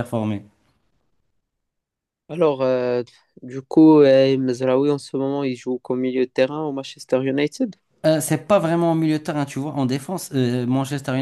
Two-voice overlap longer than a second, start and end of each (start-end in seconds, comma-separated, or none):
none